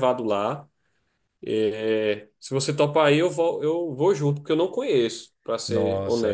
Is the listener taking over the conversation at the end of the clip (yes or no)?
yes